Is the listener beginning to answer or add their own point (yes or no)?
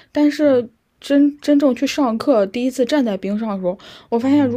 no